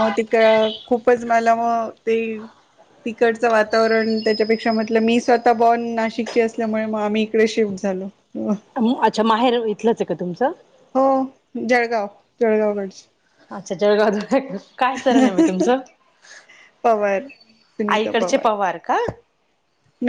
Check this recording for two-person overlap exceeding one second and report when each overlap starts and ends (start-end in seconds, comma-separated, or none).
none